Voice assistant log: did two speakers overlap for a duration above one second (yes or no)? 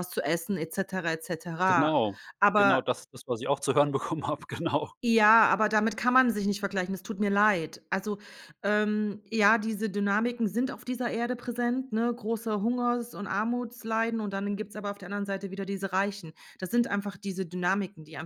no